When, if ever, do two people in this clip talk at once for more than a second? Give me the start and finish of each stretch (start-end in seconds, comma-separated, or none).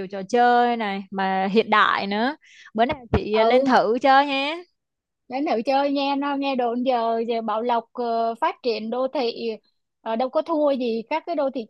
none